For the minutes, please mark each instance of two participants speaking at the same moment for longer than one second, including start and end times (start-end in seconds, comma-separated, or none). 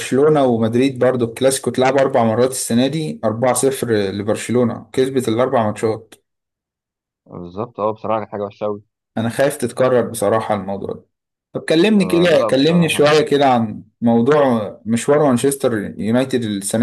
12.0-13.2